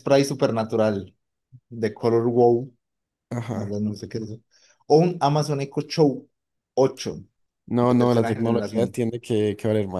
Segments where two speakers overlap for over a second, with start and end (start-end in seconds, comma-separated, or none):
7.8-9.0